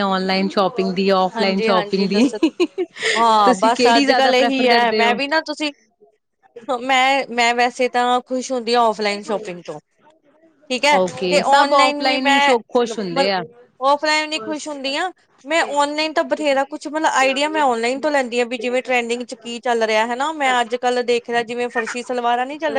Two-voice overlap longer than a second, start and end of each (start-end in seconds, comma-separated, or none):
3.4-5.1, 11.0-13.2